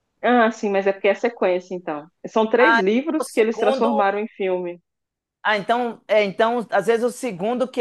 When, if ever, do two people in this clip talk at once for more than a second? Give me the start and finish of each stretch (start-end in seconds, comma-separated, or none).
2.6-4.1